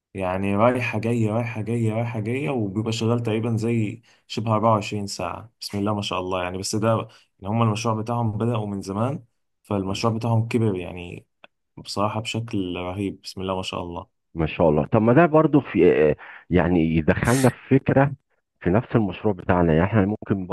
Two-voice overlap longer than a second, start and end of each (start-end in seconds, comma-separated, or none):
none